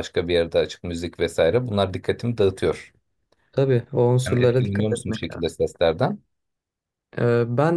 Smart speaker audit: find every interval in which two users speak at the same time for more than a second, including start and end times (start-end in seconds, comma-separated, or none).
4.3-5.6